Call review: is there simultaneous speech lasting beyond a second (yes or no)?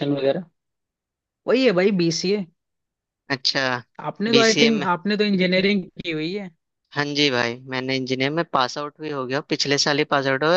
no